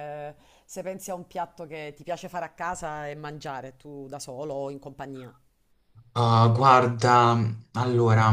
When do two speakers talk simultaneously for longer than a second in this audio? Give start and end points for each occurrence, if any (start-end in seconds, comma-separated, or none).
none